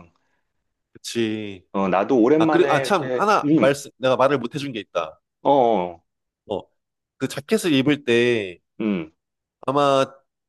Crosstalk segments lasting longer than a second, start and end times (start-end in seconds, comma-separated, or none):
2.4-3.8